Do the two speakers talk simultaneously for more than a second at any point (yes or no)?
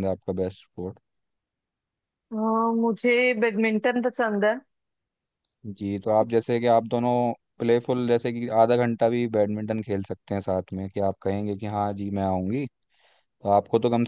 no